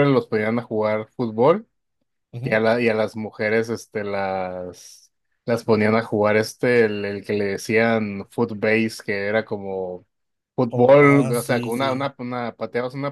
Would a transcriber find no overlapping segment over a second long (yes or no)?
no